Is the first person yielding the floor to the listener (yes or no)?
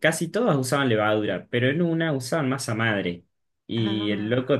no